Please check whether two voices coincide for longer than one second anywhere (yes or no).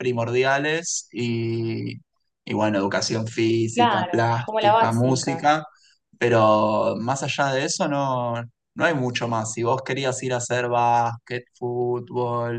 yes